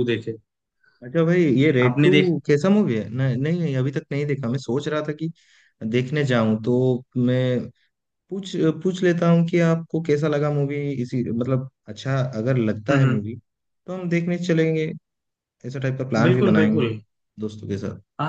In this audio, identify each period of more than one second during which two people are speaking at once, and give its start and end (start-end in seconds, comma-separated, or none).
none